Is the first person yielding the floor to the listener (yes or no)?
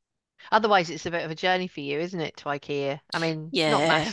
yes